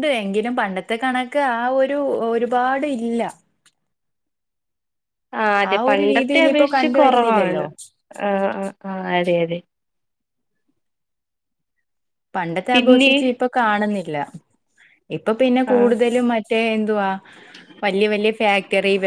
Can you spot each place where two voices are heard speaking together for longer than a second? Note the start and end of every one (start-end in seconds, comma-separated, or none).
5.9-7.6